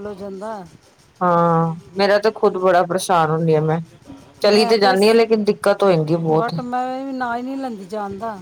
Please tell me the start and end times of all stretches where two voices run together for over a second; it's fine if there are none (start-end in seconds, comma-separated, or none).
none